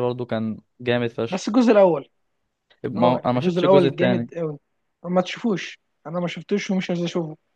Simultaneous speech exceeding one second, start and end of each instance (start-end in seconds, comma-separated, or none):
3.0-4.3